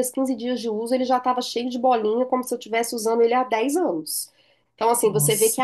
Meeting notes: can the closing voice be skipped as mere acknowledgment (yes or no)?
yes